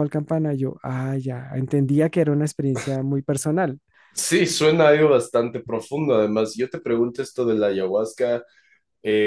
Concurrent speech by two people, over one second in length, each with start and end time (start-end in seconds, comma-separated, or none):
none